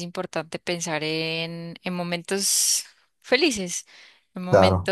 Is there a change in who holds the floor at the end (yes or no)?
no